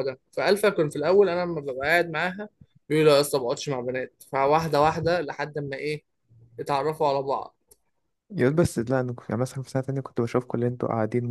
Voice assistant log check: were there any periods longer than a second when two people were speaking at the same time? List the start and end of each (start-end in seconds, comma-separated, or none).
none